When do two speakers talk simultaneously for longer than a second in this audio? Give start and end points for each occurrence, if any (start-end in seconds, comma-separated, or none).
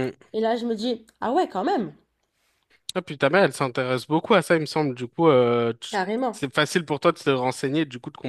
none